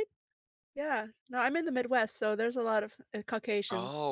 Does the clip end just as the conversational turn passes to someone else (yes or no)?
yes